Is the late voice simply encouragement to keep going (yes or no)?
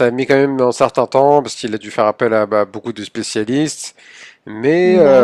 yes